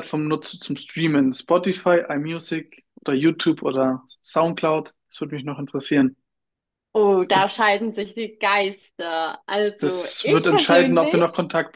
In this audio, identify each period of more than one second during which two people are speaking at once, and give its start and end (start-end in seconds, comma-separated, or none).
9.8-11.2